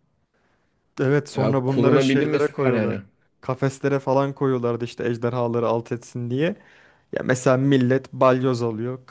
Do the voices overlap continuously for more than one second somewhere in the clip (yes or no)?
yes